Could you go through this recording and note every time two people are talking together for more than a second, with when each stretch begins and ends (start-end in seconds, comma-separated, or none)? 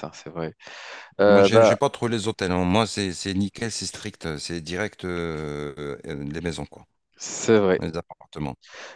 none